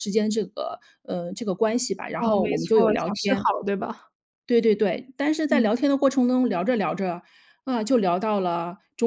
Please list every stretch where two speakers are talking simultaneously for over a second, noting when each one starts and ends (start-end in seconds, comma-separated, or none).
2.2-3.5